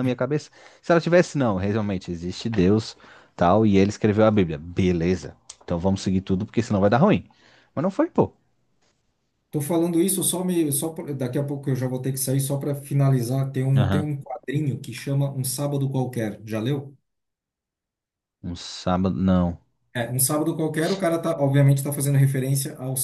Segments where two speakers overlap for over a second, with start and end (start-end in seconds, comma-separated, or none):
none